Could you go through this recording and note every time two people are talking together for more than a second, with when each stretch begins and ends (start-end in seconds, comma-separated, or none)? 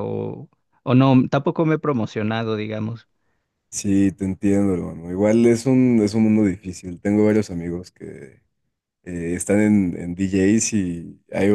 none